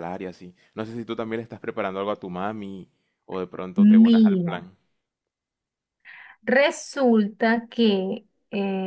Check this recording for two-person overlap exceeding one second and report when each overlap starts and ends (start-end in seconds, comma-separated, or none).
none